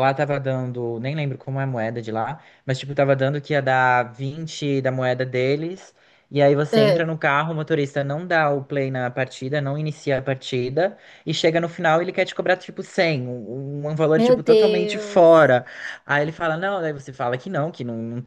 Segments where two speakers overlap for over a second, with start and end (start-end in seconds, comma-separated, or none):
14.2-15.6